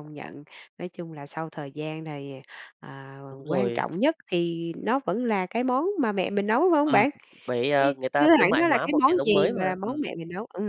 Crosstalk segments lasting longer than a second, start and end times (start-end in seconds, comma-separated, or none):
7.8-10.0